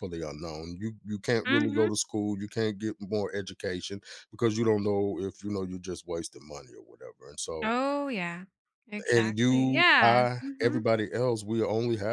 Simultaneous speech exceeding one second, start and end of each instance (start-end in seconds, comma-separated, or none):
9.1-10.8